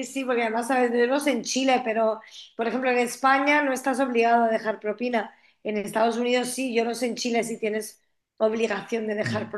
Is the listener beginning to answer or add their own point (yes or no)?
yes